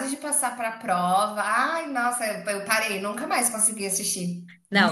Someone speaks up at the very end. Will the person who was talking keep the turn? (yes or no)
no